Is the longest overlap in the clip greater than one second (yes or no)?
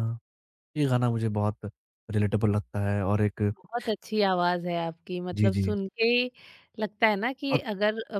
no